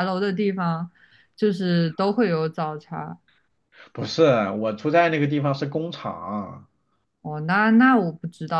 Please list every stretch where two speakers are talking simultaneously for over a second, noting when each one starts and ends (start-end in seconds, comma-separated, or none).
none